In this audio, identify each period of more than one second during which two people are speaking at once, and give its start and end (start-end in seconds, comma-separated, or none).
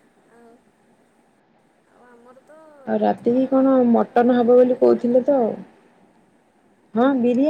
2.9-5.0